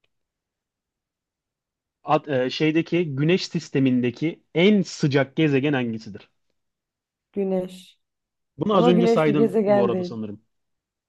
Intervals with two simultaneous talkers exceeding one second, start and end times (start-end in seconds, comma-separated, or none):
8.7-10.2